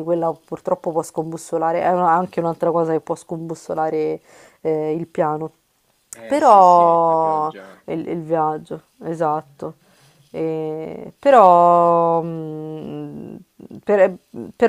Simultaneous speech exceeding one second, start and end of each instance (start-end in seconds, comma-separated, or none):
6.2-7.8